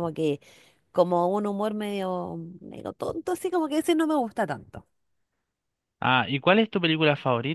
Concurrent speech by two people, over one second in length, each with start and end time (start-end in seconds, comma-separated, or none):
none